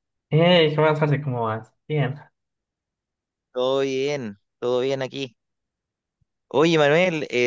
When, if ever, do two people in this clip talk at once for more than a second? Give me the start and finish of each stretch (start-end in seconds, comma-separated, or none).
none